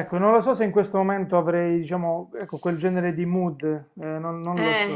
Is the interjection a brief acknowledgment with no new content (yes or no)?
no